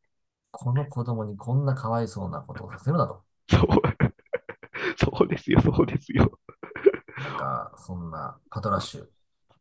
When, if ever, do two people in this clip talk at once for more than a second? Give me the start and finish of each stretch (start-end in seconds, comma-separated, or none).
none